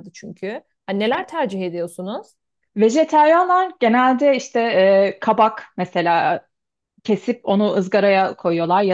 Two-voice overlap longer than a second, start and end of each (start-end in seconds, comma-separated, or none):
none